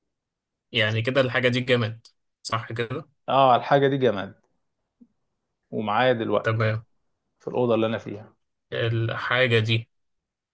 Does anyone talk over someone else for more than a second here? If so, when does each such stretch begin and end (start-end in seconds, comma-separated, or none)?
none